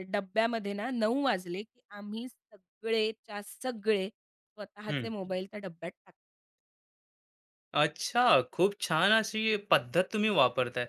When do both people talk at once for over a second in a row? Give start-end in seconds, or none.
none